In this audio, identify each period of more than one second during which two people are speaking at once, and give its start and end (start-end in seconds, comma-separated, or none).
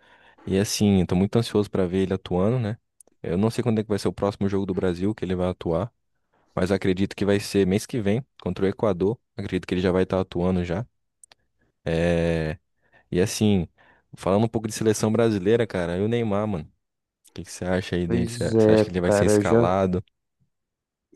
18.0-19.7